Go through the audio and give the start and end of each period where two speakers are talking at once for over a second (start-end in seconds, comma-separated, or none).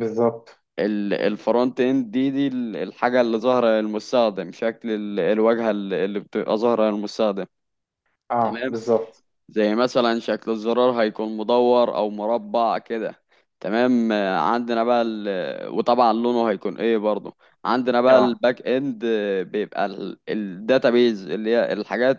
none